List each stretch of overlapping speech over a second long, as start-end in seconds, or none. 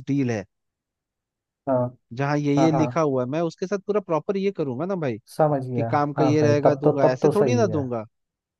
5.8-7.8